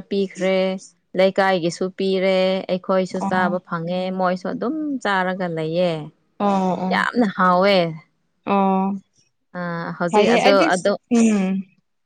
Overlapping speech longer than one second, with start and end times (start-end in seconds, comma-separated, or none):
none